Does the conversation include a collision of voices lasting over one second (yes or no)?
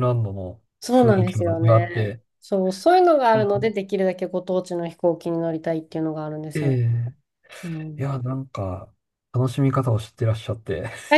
yes